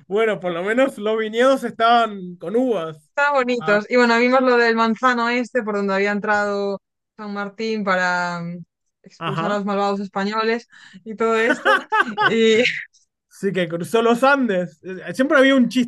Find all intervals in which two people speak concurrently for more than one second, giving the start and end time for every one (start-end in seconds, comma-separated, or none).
none